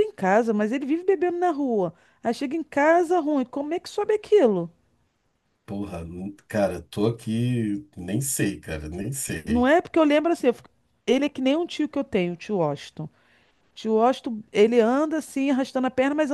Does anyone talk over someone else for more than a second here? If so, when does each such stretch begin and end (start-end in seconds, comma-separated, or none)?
none